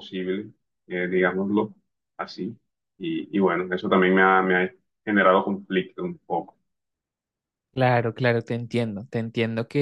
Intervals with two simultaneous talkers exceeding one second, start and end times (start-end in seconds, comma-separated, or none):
none